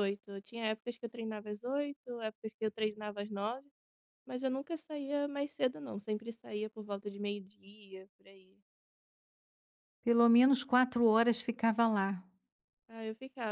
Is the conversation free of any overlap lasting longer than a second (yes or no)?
yes